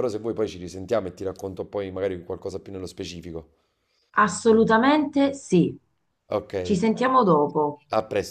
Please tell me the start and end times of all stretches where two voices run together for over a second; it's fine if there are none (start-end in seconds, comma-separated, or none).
none